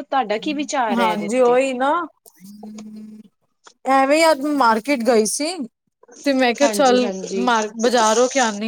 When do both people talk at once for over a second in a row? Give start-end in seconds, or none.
none